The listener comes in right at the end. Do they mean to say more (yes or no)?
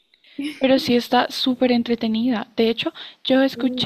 no